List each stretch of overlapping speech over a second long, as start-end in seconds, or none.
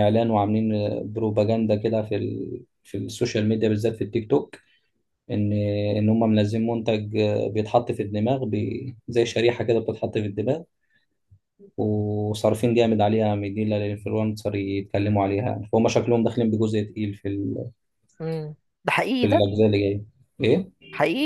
none